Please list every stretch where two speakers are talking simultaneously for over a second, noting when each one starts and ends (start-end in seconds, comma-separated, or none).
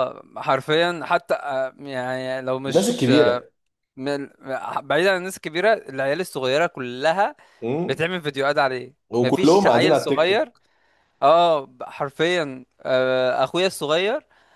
9.1-10.5